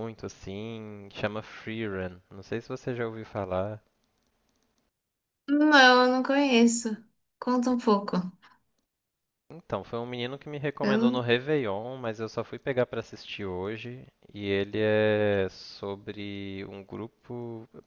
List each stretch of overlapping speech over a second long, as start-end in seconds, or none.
none